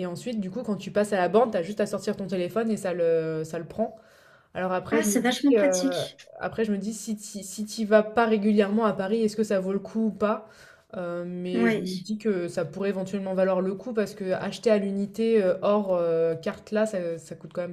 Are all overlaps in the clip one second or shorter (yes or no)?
no